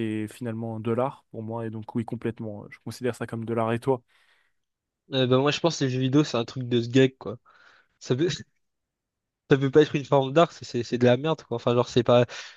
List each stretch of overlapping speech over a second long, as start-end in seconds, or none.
none